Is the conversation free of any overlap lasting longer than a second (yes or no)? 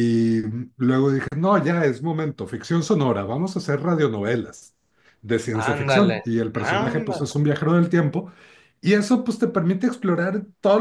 no